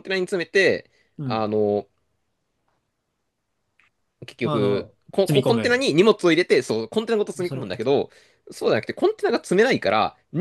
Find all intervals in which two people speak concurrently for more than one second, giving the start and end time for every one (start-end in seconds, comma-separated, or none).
4.4-5.8